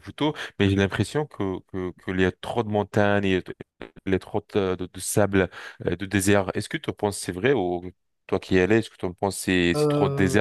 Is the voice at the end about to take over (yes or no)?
no